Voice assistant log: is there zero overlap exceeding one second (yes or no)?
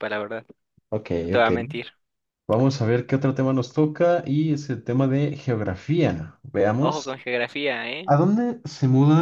yes